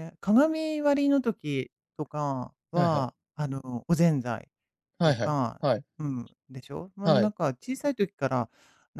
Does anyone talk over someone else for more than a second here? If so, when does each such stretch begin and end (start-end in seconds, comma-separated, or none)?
none